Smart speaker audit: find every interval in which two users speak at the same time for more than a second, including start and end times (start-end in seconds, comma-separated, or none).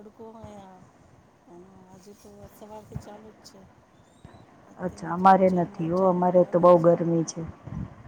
4.8-6.7